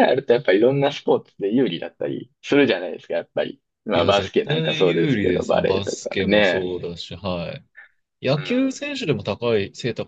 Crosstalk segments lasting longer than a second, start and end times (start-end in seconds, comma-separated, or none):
3.9-6.7